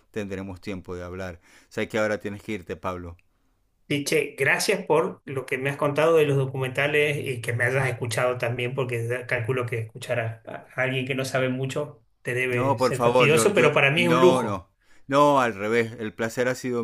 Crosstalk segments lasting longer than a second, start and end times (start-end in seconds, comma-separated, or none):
12.5-14.7